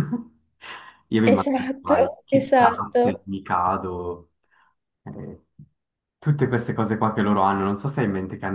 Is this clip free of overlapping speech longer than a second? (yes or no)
no